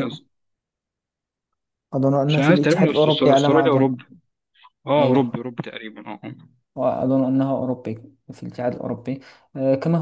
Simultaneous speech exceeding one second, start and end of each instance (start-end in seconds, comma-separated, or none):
2.3-3.9